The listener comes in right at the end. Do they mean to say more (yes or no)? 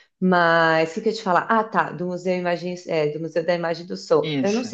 no